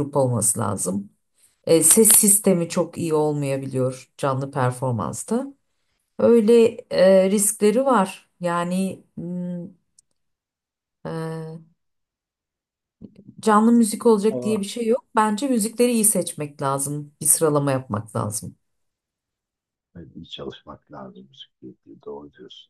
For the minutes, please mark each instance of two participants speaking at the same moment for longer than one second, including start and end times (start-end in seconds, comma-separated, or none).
none